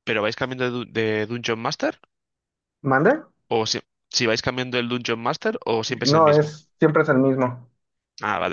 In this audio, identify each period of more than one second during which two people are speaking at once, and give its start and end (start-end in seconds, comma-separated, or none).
none